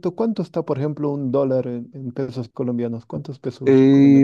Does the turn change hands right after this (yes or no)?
yes